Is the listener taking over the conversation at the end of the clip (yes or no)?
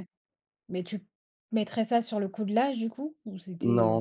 yes